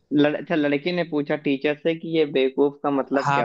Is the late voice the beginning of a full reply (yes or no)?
yes